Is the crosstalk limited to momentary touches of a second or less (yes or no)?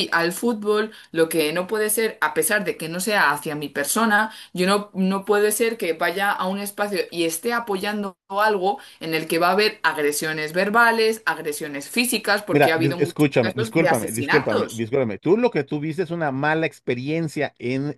no